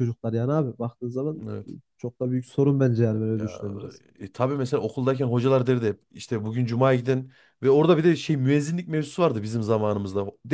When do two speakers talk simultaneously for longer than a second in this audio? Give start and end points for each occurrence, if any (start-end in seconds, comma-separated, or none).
none